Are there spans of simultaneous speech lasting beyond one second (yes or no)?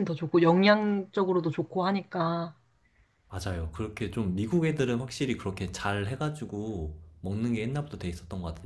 no